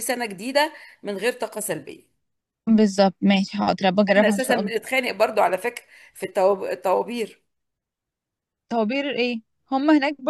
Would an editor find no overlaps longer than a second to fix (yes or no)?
yes